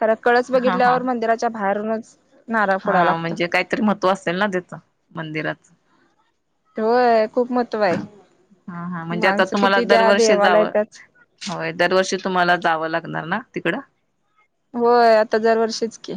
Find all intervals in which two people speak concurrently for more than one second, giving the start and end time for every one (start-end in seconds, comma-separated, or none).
9.2-10.7